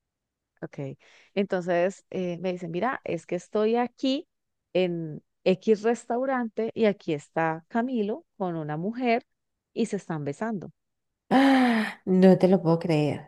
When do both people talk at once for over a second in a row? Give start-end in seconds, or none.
none